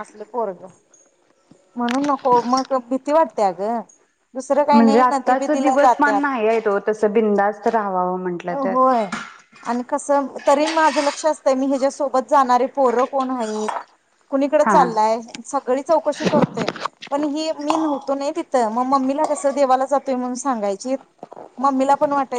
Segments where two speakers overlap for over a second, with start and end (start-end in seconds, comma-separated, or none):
none